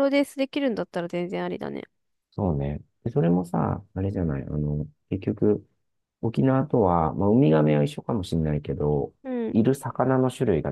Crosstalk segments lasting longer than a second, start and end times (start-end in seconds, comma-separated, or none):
none